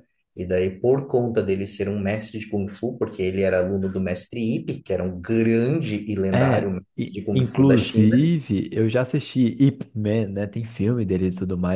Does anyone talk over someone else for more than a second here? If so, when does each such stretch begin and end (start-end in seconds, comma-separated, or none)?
6.3-8.3